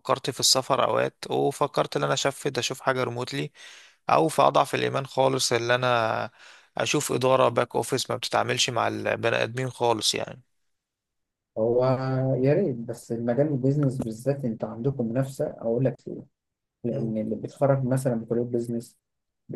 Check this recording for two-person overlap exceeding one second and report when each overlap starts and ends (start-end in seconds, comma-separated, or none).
none